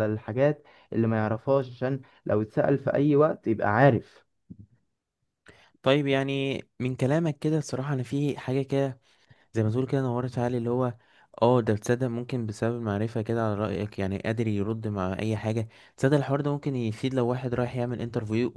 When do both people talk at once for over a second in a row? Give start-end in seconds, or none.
none